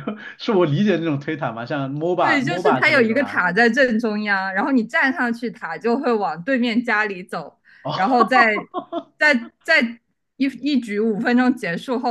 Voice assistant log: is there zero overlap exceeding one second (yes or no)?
no